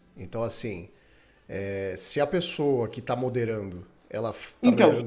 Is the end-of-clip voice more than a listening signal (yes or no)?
no